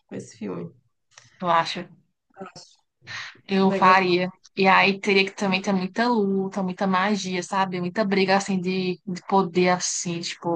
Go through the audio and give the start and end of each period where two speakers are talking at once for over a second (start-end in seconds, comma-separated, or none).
none